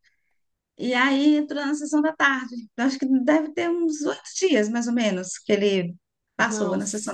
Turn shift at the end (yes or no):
yes